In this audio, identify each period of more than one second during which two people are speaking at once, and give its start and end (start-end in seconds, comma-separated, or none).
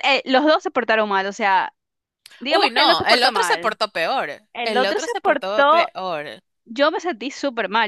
2.5-3.8, 4.5-5.9